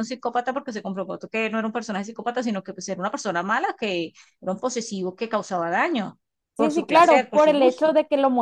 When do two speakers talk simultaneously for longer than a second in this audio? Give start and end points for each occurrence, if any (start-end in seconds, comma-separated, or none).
6.6-7.9